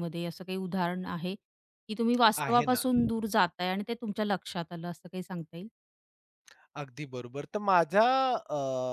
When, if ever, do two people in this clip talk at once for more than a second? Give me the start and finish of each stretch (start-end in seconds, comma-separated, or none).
none